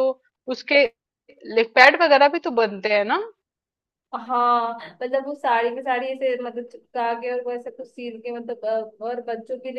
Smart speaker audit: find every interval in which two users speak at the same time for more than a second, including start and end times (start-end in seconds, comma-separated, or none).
none